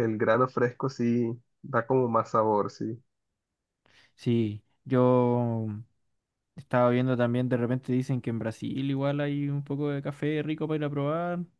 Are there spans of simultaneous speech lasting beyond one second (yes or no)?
no